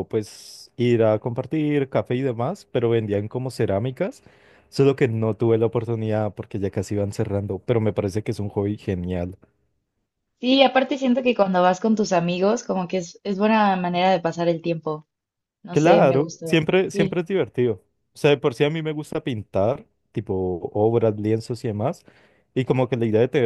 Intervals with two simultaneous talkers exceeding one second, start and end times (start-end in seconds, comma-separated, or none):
15.7-17.2